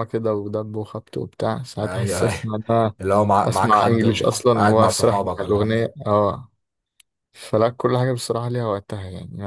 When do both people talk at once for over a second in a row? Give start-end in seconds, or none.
3.4-5.8